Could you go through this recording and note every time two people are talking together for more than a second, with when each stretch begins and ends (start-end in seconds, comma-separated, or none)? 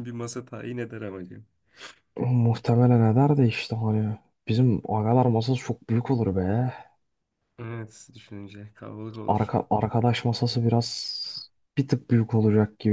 none